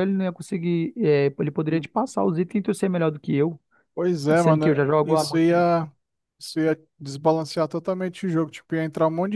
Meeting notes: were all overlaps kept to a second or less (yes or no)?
no